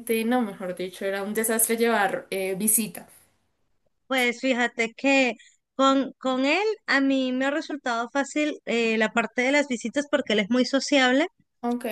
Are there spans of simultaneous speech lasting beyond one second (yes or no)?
no